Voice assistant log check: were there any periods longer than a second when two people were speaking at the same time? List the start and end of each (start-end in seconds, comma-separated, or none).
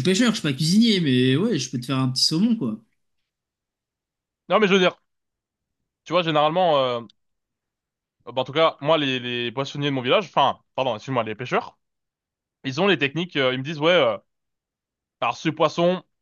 none